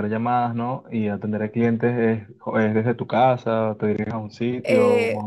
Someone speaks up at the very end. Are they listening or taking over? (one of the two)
taking over